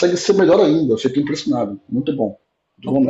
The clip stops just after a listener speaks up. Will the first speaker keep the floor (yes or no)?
no